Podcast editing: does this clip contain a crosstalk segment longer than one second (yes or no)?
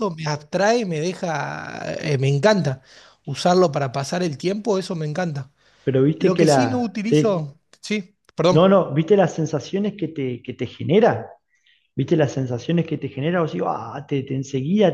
yes